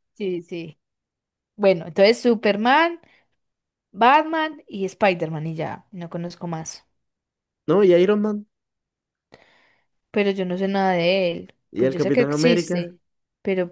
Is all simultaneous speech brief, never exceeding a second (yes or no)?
no